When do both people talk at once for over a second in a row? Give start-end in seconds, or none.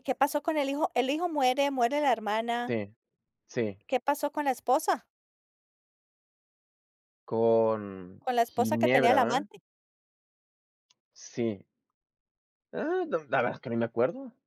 8.2-9.5